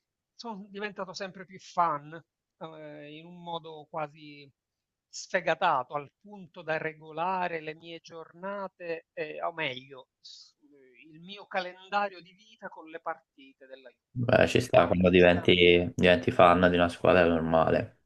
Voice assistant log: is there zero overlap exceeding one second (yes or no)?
no